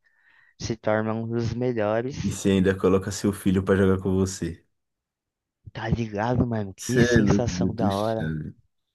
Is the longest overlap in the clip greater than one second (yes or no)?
yes